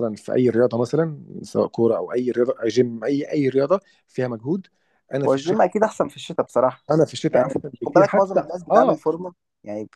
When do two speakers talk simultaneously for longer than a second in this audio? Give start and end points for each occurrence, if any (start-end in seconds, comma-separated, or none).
7.3-9.0